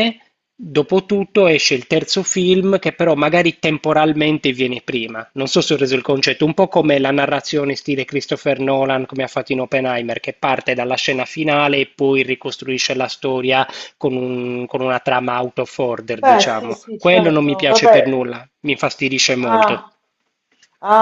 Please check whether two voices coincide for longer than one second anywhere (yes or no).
yes